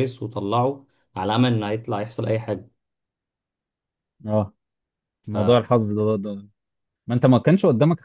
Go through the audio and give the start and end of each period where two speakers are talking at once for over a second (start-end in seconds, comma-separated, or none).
none